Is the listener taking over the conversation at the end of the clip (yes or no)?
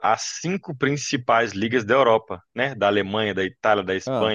no